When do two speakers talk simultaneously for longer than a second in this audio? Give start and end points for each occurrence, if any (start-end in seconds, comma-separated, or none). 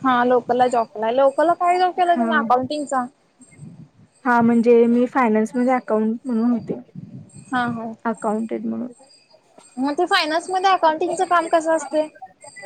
none